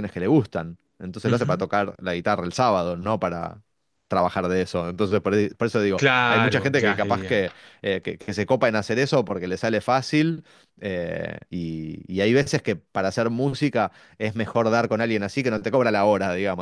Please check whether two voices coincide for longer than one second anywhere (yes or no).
yes